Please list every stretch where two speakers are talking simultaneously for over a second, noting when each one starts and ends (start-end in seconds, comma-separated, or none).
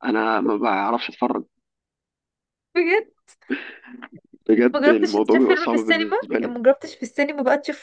4.8-6.5